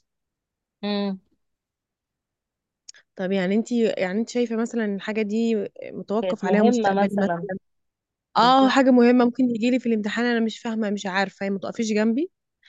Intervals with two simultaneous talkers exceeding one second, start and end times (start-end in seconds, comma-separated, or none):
6.2-7.5